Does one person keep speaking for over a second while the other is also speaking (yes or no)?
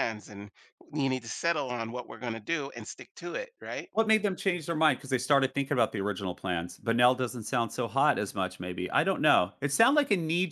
no